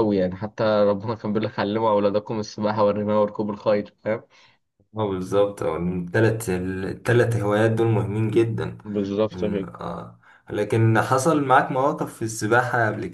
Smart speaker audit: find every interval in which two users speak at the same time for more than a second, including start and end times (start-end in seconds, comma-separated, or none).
none